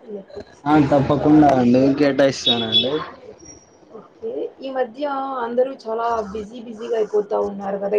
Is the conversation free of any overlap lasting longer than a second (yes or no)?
yes